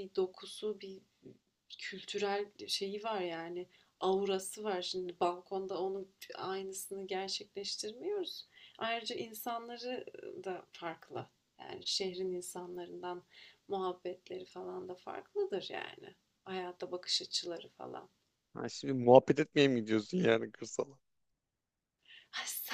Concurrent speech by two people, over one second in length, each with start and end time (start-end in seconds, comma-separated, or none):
none